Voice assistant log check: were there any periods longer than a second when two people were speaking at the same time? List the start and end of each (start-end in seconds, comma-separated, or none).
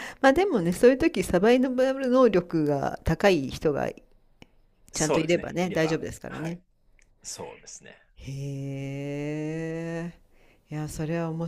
4.9-6.6